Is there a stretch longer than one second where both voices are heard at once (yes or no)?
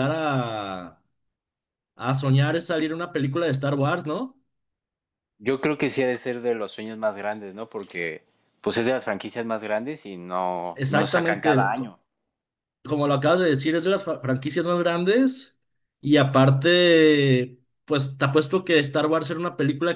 yes